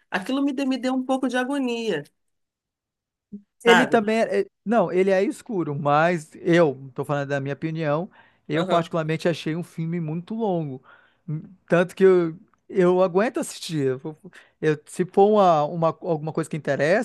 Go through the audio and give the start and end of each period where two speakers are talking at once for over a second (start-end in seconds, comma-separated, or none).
none